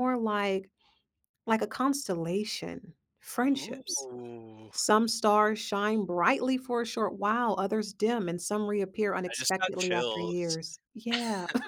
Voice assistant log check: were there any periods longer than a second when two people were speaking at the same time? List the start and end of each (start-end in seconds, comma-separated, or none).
9.3-10.6